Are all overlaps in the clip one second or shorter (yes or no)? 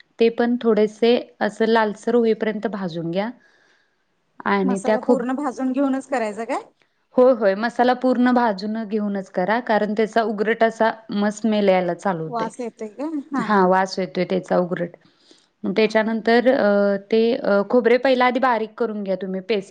yes